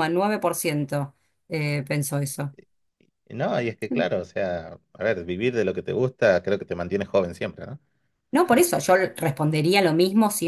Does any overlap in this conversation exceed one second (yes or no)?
no